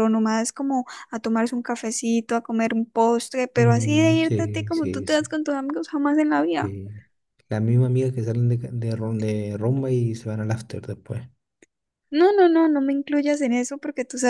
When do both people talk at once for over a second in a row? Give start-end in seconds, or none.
3.5-5.3